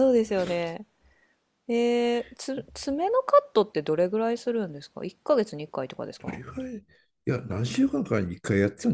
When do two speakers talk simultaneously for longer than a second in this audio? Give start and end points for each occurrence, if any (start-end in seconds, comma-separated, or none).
none